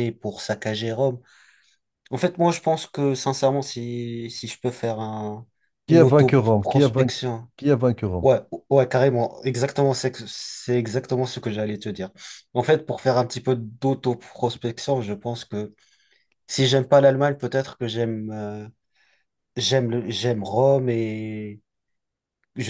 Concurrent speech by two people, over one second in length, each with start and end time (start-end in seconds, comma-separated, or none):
5.9-7.2